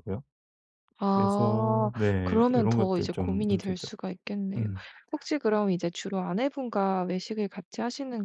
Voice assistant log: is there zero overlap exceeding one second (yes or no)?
no